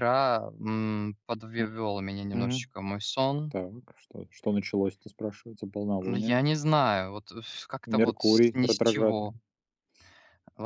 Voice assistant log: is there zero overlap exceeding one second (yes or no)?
no